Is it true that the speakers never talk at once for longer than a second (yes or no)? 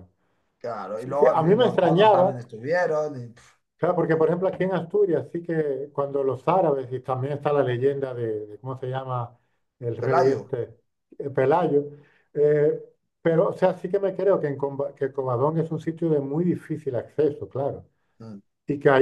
no